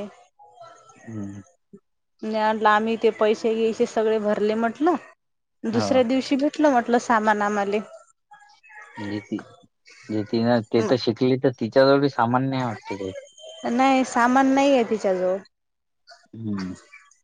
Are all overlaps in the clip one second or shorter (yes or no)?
yes